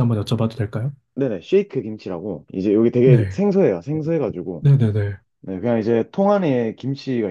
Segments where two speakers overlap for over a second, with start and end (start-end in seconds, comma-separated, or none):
none